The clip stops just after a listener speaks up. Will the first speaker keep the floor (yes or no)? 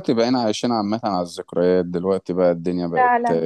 yes